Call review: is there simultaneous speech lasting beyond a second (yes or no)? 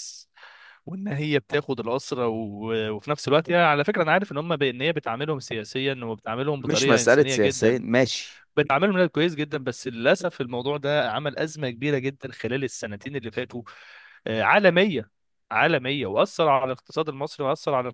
yes